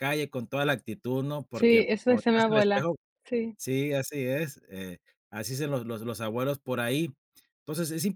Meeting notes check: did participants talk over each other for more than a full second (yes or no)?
yes